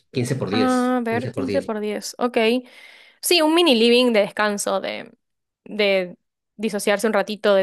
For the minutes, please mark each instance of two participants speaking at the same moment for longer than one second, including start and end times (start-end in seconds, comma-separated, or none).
0.5-1.7